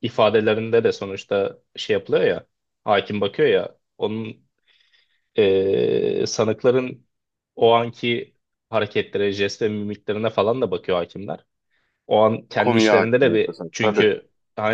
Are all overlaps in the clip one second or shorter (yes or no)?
no